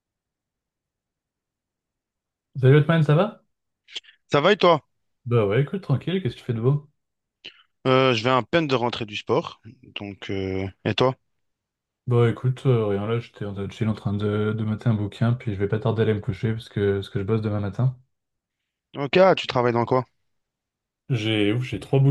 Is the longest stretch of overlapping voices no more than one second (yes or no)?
yes